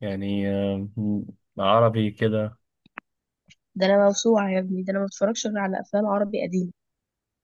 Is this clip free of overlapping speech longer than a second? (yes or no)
yes